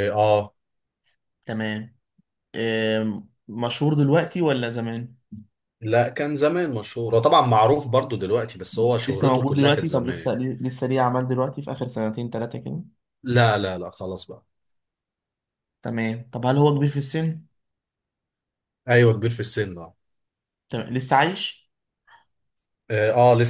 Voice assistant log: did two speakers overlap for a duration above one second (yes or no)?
yes